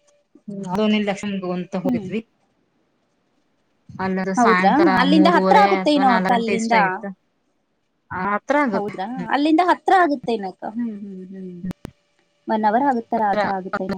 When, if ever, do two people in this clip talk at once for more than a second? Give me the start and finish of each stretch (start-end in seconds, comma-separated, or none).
4.4-6.8